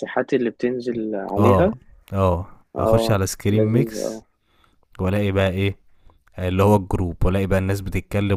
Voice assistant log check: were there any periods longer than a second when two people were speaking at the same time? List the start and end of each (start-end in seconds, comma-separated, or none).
2.8-4.2